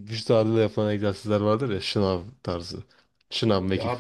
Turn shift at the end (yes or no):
no